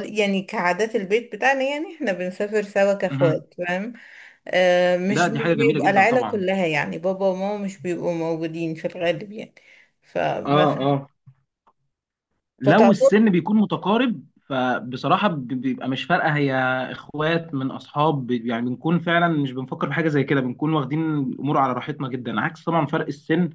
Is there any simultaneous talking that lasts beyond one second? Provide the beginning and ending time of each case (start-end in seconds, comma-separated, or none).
5.1-6.4